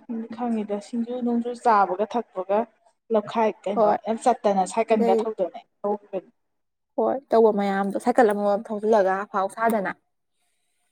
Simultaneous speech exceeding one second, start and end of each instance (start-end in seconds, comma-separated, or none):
none